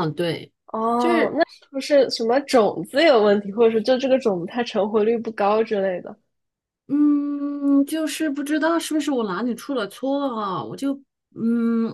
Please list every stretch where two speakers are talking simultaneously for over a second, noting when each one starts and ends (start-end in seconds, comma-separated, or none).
none